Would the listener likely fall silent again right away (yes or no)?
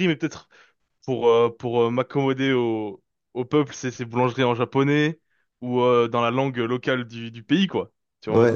no